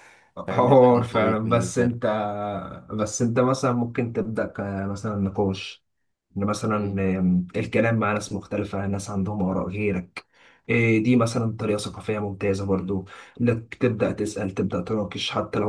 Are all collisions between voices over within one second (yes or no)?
no